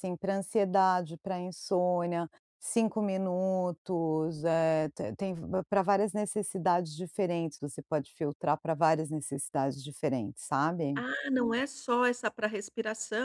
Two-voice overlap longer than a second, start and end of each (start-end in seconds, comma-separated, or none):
none